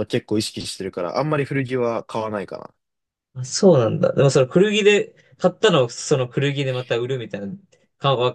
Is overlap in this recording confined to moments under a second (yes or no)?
yes